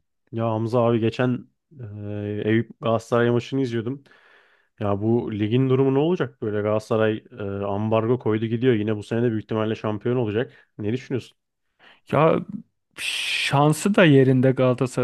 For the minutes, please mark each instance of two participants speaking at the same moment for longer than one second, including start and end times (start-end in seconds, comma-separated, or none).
none